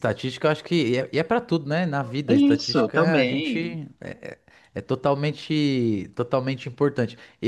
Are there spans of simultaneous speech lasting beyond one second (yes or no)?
yes